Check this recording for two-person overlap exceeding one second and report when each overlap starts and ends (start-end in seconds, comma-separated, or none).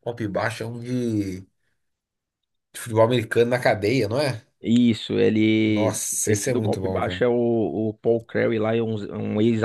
5.6-7.2